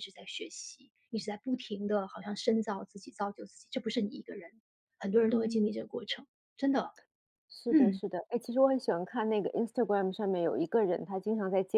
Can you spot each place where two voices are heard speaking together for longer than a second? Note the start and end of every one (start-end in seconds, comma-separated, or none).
none